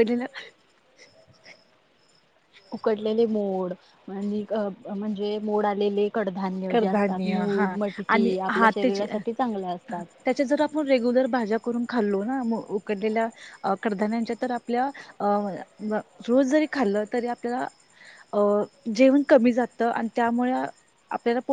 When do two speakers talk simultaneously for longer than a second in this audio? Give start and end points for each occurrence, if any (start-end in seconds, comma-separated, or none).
6.7-9.1